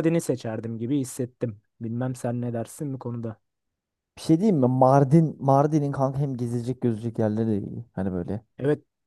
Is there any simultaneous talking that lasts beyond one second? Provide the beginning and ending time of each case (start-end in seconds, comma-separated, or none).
none